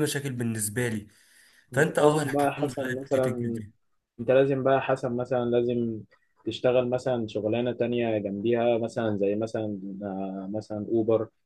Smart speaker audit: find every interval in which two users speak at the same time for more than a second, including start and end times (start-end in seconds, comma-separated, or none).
1.7-3.6